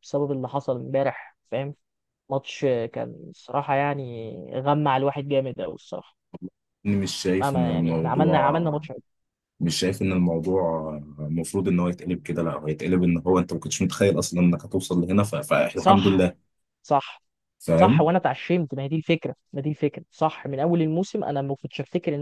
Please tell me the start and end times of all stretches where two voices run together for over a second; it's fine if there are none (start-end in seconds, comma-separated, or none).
7.4-8.6